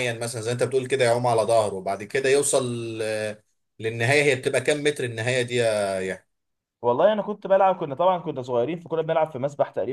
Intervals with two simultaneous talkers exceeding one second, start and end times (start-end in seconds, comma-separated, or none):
none